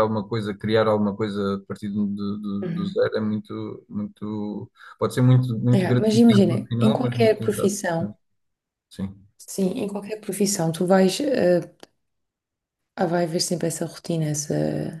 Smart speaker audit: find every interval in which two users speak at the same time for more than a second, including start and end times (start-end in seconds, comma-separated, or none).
5.7-7.8